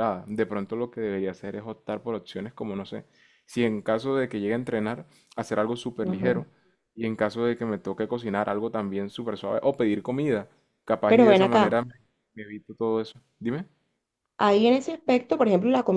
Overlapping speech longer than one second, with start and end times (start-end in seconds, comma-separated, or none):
none